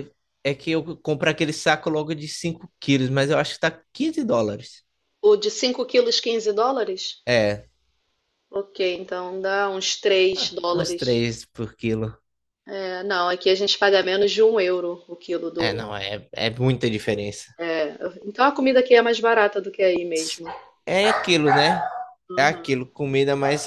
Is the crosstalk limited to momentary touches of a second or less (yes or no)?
yes